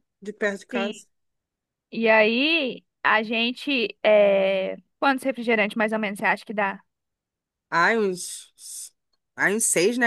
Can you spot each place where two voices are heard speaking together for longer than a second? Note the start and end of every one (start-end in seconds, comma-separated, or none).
none